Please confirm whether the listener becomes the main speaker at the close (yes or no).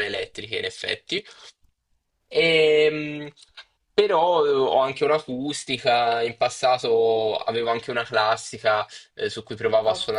no